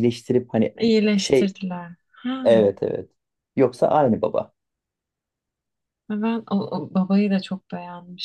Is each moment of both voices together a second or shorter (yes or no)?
yes